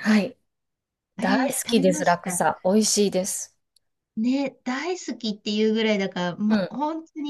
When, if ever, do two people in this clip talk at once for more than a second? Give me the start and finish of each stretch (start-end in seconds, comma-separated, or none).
1.2-2.5